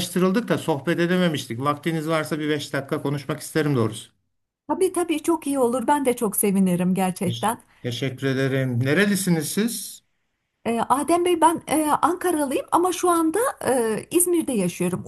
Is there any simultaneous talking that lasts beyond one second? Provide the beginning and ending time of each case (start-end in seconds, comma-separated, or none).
none